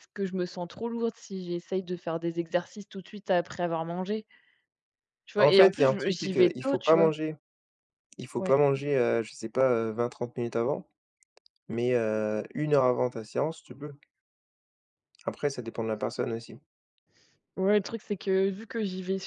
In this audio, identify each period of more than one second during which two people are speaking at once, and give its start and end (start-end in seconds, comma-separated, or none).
5.4-7.1